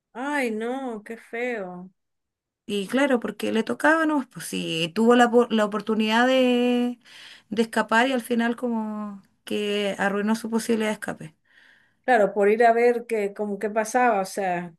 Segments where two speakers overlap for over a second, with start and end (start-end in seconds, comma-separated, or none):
none